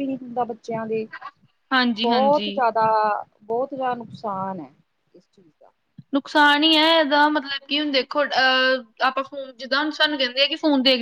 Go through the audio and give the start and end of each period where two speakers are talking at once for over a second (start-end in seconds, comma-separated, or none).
none